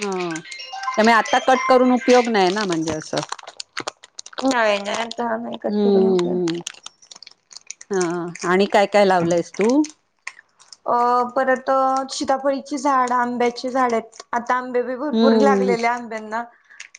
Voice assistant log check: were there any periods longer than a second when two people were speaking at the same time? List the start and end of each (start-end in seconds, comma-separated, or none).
none